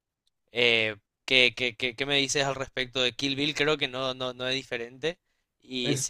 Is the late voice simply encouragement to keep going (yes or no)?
yes